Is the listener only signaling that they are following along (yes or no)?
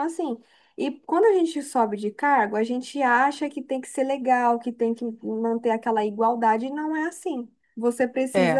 yes